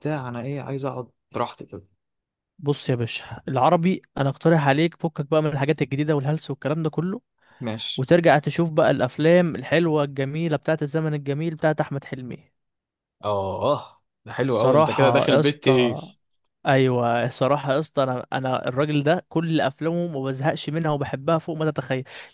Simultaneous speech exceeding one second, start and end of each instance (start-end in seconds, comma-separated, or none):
14.5-16.0